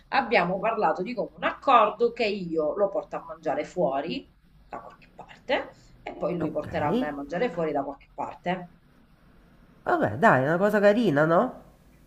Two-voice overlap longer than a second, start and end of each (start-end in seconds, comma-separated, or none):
none